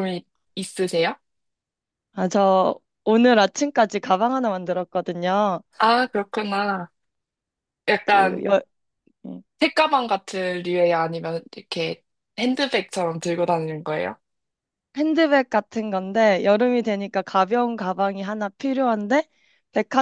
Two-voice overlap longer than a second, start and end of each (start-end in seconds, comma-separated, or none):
none